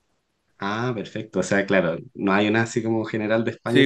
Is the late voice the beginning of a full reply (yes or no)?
yes